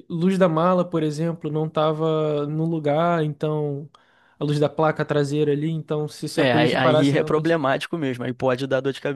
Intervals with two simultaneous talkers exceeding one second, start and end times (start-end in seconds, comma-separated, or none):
6.3-7.6